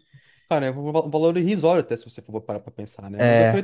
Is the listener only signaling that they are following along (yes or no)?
yes